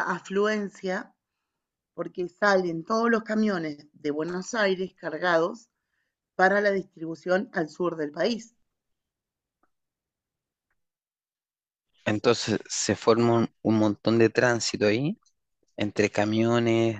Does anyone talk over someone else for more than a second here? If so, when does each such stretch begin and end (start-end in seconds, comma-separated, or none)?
none